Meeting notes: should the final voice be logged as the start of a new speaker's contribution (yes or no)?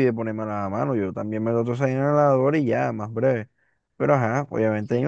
no